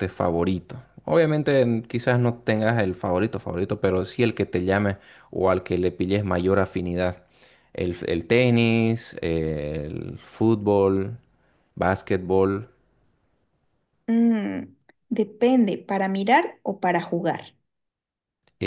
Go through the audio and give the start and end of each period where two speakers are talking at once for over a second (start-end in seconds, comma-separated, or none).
none